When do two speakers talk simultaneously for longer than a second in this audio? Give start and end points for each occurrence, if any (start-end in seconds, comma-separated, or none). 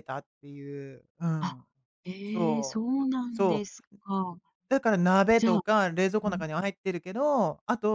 2.2-3.8